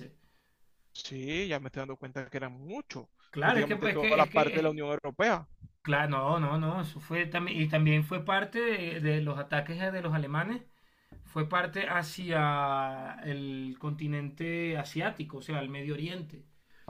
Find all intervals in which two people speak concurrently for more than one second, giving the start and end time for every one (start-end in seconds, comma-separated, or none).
3.4-4.8